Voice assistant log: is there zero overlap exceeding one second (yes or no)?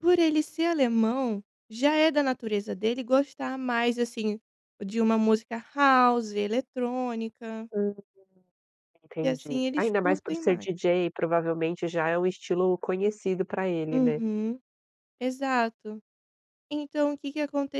no